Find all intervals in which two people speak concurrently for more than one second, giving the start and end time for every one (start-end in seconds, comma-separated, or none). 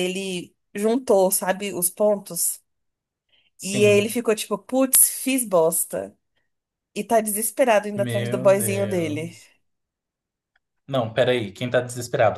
7.9-9.4